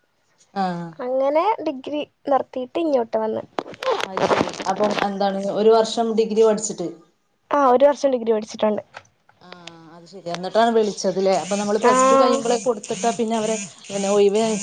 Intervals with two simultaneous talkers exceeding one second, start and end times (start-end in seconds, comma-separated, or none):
none